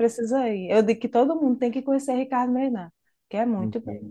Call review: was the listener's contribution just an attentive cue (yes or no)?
no